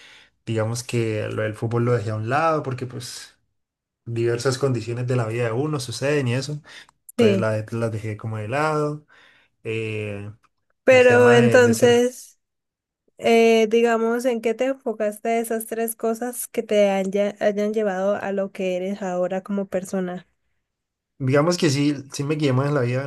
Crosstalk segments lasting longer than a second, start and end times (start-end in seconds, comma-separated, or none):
10.9-12.1